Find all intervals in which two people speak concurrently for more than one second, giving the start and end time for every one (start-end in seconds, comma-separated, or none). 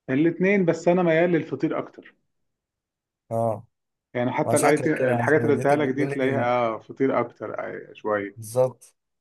4.5-6.5